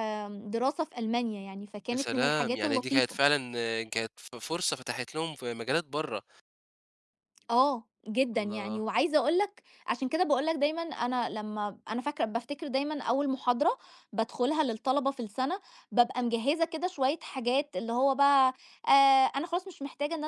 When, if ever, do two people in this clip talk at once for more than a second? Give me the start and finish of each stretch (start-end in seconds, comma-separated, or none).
1.9-3.2